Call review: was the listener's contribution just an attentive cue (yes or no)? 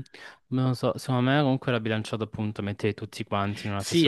no